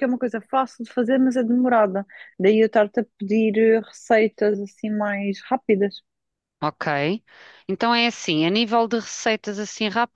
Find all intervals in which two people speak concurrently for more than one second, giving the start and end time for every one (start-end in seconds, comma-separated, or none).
none